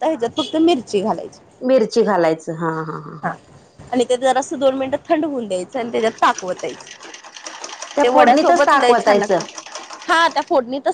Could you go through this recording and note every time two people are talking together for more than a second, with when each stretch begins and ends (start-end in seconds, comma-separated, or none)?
8.0-9.4